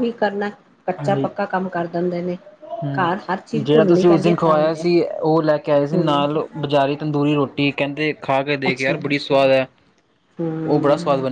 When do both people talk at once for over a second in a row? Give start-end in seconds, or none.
3.0-4.8